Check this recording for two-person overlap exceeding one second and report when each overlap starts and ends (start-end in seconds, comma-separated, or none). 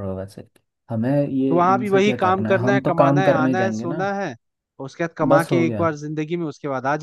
1.5-4.0